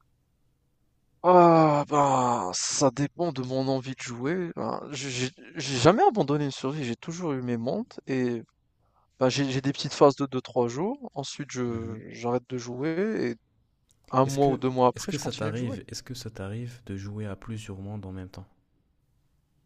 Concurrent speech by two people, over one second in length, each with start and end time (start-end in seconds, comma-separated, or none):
14.2-15.8